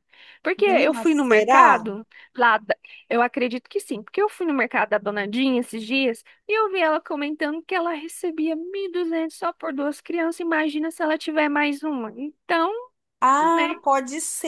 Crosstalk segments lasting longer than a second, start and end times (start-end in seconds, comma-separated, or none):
0.6-1.9